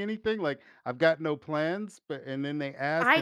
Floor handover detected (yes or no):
yes